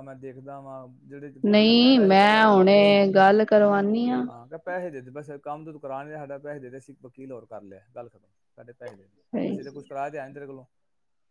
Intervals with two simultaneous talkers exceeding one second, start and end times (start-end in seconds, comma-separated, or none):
1.5-3.0